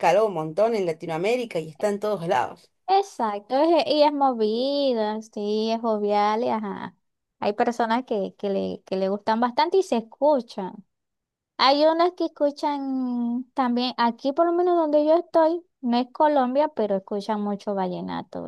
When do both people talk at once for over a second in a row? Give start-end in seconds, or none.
none